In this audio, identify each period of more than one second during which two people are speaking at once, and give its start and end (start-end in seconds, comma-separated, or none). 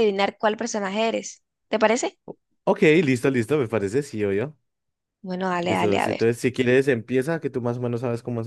none